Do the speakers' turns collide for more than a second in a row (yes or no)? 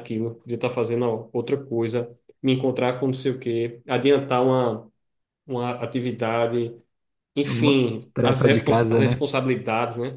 yes